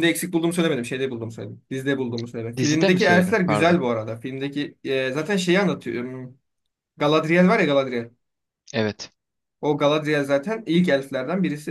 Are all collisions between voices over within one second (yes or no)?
no